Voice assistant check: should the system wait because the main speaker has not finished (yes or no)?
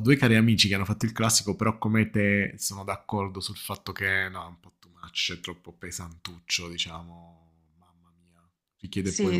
no